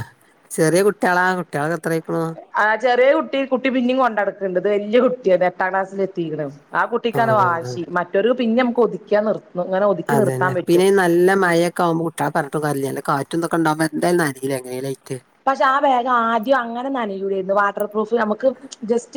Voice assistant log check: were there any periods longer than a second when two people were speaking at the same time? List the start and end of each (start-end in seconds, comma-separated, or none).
none